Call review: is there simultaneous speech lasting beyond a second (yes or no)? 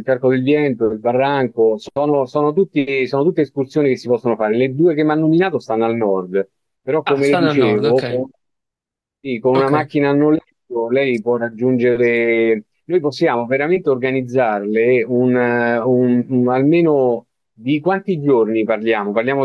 yes